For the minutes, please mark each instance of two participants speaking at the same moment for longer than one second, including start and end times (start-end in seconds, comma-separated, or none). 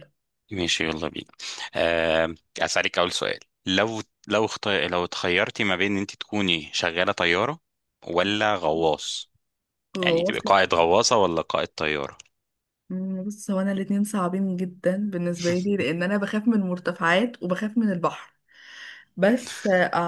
none